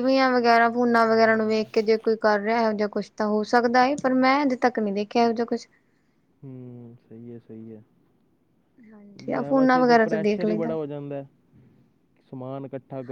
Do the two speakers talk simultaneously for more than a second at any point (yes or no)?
yes